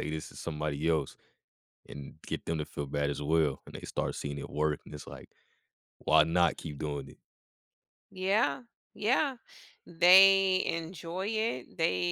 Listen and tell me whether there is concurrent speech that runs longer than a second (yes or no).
no